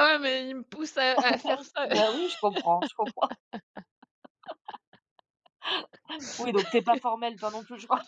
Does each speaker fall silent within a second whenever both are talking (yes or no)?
yes